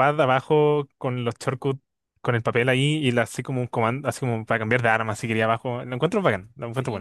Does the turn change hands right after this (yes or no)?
yes